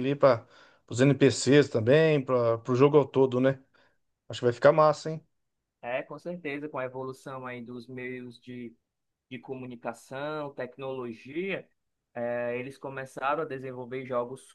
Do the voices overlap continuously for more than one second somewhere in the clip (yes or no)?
no